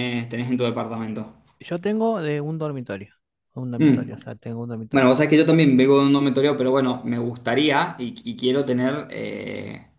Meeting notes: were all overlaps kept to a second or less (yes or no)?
yes